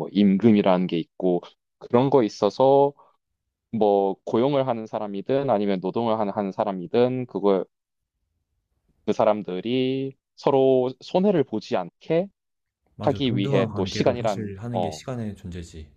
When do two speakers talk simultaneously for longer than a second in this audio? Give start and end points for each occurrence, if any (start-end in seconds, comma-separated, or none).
13.0-15.0